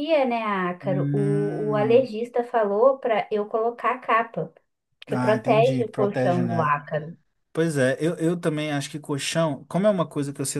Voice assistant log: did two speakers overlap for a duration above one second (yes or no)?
yes